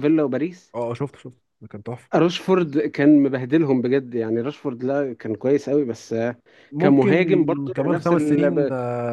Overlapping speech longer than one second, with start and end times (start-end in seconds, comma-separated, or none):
6.8-8.4